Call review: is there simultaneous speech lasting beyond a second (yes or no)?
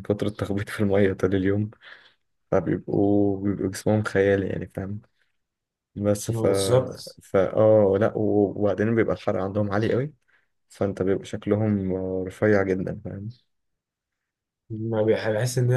no